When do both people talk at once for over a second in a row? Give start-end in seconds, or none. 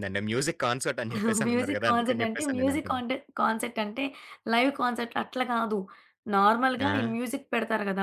1.5-3.0